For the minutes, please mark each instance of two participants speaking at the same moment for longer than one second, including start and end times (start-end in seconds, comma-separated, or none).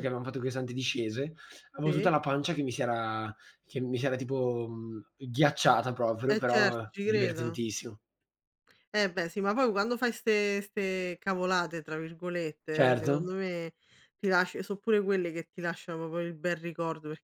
6.3-7.6